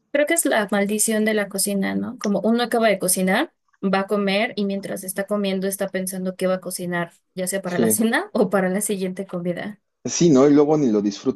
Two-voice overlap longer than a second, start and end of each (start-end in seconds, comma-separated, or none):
none